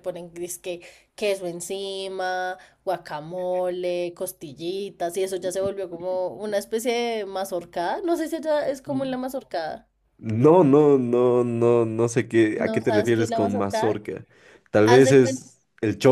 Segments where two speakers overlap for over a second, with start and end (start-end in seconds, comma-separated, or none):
12.6-14.0